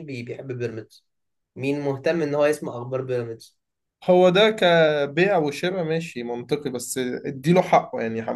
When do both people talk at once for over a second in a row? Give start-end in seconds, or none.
none